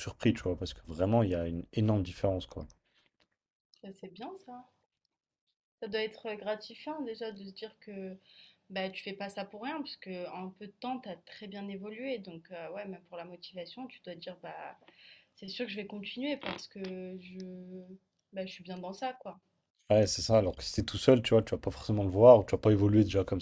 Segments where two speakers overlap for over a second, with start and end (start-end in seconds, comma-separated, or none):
none